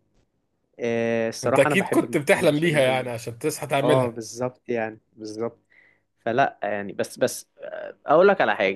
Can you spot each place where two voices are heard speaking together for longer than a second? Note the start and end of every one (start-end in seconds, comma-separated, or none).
1.4-3.1